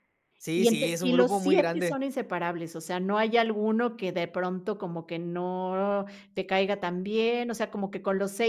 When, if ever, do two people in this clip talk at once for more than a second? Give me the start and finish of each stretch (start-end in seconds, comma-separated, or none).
0.6-2.0